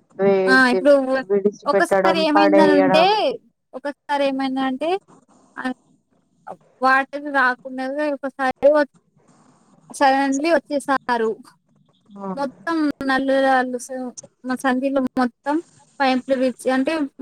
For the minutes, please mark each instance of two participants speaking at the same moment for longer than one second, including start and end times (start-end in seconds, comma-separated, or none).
1.7-3.0